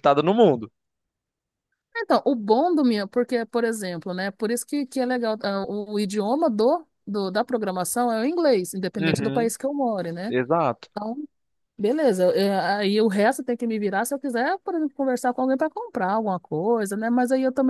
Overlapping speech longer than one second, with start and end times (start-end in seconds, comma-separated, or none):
none